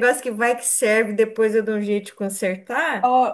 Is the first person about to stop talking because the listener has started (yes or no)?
yes